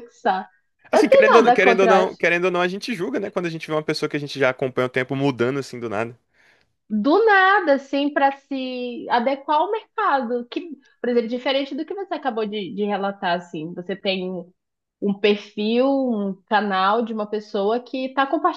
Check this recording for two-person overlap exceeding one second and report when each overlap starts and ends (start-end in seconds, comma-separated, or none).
0.9-2.2